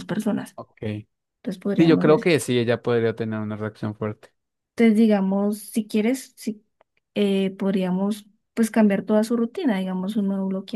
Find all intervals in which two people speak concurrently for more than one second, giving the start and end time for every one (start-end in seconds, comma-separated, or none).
none